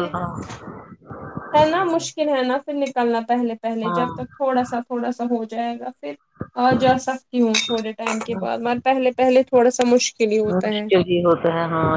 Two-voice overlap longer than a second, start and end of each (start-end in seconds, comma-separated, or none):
none